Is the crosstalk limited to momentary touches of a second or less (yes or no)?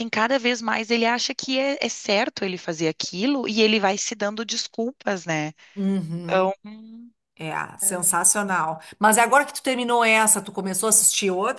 yes